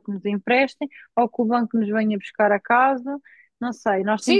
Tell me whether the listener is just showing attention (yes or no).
no